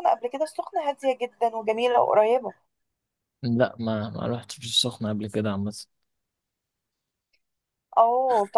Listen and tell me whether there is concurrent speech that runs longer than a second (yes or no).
no